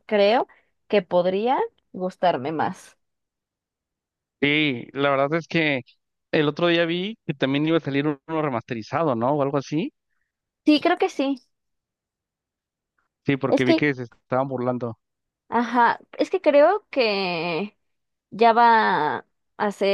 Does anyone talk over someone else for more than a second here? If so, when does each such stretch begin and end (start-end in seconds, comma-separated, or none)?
none